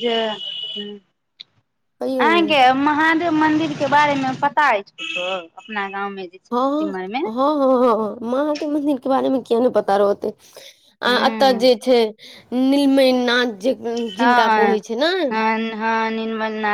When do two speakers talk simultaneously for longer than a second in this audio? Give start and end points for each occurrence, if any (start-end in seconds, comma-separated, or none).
none